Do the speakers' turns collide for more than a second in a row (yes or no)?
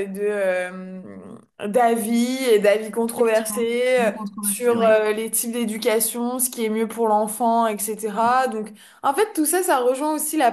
yes